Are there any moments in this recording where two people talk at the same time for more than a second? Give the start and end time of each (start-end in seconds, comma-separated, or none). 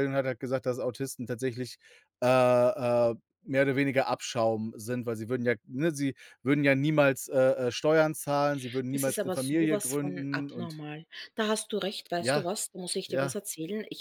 8.9-10.8